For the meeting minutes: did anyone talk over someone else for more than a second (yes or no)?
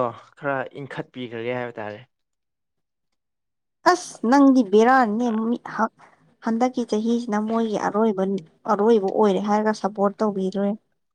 no